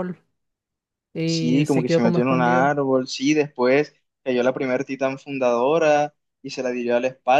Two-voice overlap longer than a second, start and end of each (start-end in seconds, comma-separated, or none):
1.2-2.8